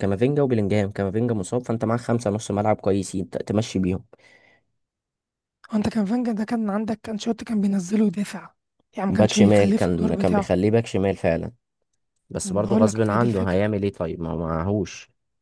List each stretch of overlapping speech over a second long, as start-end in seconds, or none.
9.1-10.5, 12.4-13.6